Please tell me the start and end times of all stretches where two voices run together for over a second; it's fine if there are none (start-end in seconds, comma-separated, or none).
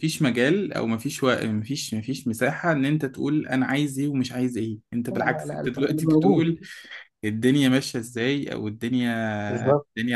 5.1-6.5